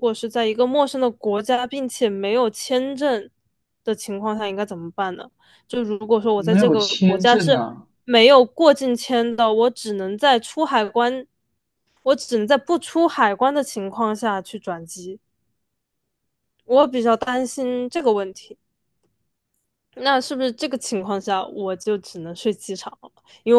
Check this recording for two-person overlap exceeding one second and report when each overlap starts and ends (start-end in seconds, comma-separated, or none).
6.3-7.6